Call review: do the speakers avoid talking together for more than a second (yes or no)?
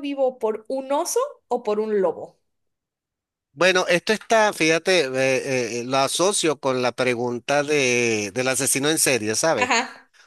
yes